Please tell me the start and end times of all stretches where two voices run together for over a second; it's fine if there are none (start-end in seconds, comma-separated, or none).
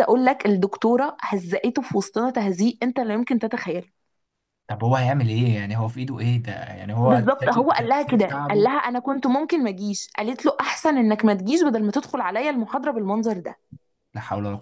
7.0-8.7